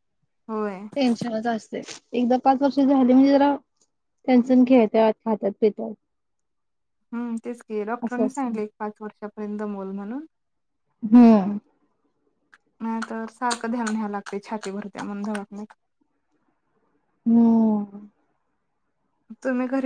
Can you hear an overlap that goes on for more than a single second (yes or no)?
no